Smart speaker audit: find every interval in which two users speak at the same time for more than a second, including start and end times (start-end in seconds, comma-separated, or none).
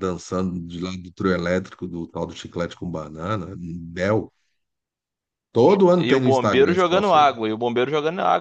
6.0-7.3